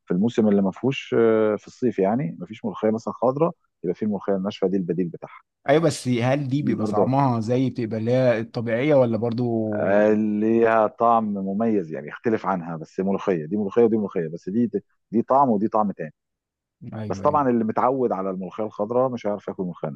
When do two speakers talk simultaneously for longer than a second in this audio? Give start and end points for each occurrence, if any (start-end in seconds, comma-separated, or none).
none